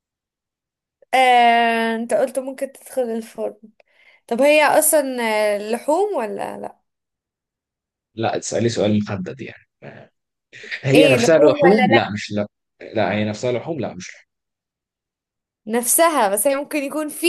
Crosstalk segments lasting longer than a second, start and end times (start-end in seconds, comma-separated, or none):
10.9-12.1